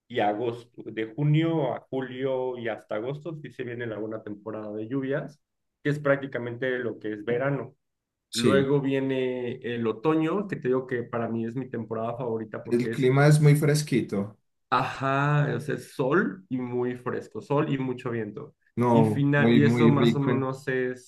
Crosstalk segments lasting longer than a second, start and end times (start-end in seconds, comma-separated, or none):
18.9-20.5